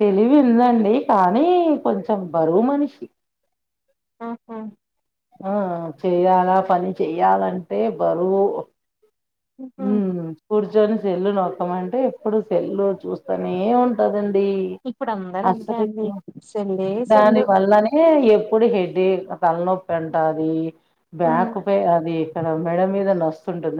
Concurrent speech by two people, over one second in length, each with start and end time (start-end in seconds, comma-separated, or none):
none